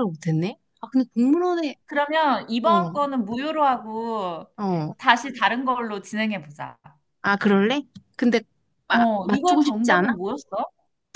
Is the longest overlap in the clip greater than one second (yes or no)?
yes